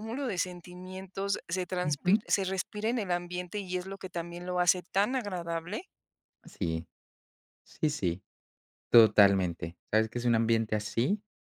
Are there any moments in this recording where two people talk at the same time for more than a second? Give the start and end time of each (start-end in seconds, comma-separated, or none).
none